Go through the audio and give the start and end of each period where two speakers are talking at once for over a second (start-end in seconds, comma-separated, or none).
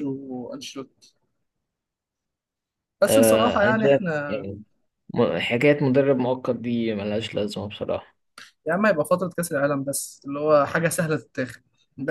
3.1-4.5